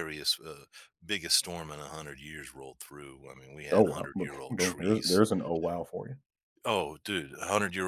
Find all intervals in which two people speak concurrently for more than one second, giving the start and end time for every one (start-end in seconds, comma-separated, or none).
3.7-5.2